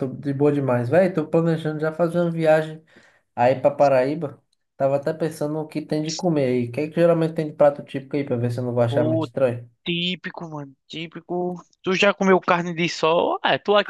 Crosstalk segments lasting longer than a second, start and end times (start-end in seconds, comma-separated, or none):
none